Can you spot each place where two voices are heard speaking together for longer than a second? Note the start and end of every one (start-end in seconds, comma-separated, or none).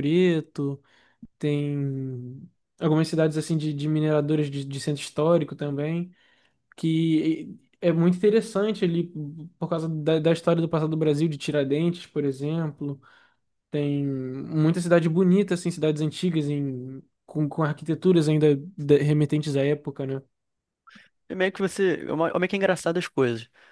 none